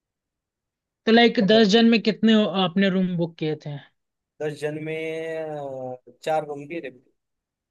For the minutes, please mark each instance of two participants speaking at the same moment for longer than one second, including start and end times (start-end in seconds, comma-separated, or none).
none